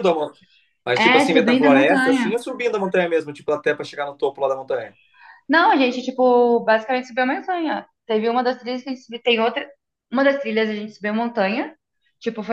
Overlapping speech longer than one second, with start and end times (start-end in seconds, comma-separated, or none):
0.9-2.4